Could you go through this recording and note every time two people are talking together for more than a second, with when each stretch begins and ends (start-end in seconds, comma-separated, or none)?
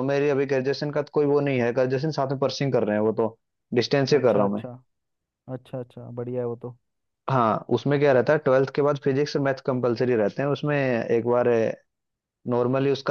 none